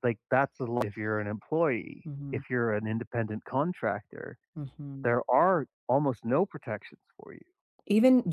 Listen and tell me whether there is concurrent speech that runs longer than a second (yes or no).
no